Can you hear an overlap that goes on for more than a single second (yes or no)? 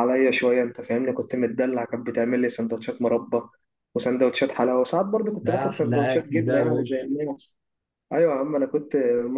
yes